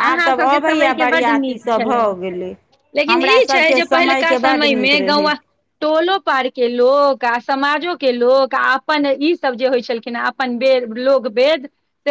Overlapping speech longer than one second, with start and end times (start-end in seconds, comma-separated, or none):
3.1-5.3